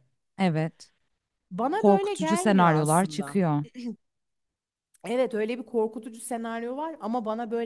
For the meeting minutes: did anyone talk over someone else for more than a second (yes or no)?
yes